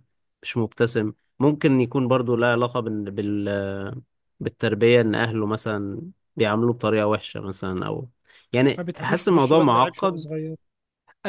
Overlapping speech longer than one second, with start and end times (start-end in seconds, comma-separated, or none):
8.8-10.3